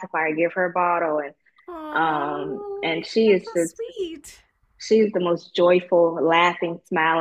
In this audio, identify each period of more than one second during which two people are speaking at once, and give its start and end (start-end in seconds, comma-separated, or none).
1.9-3.8